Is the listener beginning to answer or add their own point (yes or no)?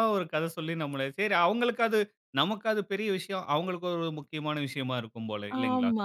yes